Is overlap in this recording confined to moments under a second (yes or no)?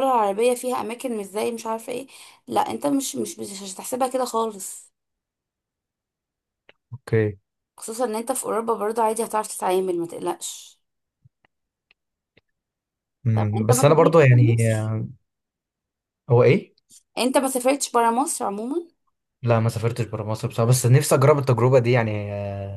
no